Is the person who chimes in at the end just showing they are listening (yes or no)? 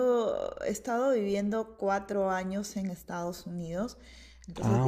yes